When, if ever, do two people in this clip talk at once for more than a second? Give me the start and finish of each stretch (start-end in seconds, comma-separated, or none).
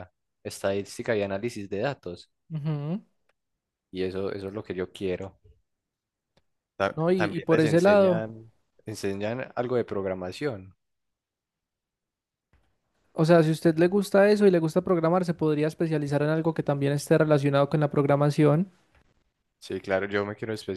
7.0-8.2